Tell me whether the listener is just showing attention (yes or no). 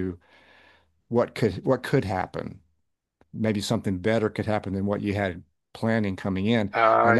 yes